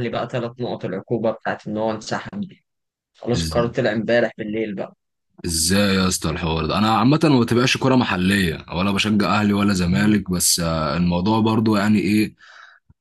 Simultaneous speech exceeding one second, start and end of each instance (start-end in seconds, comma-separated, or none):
none